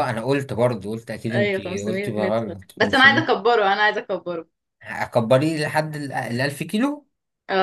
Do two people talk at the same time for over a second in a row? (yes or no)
yes